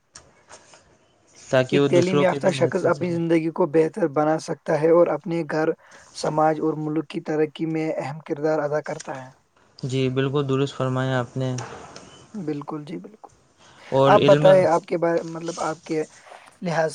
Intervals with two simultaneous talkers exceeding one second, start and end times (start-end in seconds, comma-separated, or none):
1.7-3.2